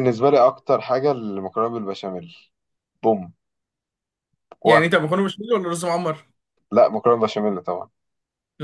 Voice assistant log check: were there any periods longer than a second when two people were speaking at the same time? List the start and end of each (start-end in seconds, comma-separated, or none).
none